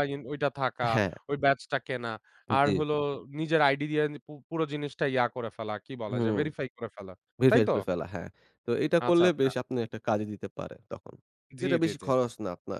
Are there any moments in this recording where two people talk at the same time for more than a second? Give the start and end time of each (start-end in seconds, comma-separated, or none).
none